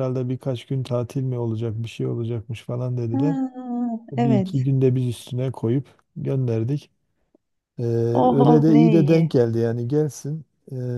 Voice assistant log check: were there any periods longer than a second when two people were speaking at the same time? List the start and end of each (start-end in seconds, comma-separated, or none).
8.1-9.4